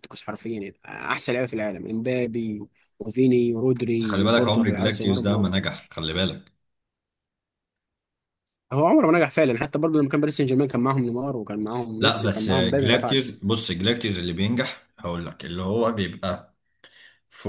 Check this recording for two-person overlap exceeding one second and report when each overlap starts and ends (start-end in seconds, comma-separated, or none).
4.0-5.5, 12.0-13.3